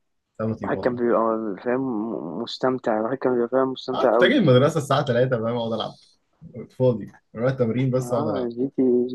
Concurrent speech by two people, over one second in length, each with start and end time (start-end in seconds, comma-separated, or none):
none